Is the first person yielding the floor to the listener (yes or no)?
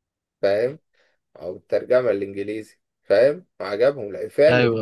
no